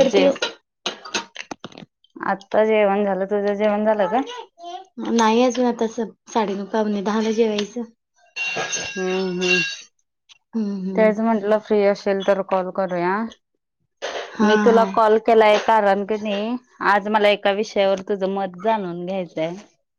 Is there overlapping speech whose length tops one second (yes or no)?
no